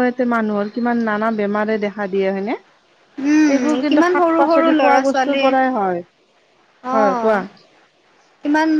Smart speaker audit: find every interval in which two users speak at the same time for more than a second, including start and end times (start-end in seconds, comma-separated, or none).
3.6-5.4